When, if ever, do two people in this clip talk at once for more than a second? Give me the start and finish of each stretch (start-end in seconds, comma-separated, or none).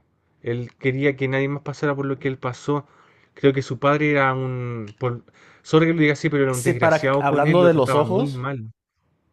6.4-8.5